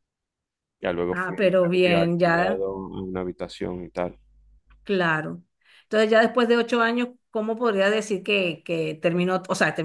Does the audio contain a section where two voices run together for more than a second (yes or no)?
yes